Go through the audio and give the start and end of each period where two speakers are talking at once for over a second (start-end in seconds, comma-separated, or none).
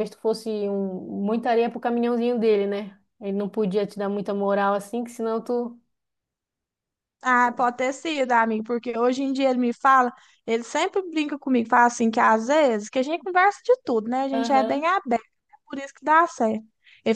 none